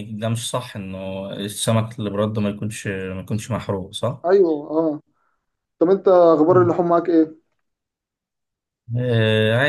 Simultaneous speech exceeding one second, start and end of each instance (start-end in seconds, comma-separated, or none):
none